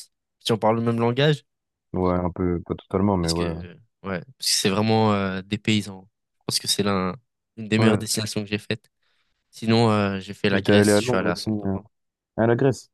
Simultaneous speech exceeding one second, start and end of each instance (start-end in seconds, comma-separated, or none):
10.5-11.8